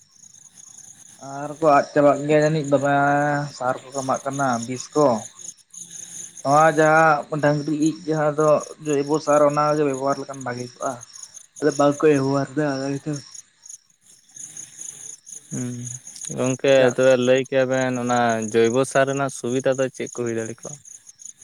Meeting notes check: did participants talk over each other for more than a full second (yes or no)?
no